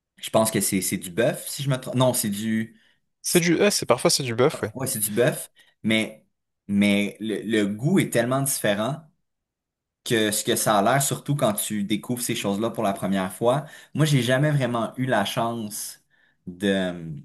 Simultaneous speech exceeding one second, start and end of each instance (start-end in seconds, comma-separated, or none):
none